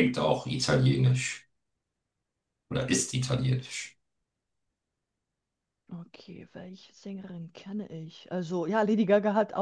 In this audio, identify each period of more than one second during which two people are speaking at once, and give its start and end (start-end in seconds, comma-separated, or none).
none